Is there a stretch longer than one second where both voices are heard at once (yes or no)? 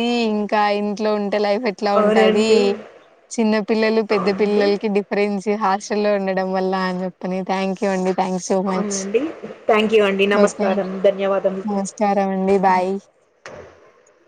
no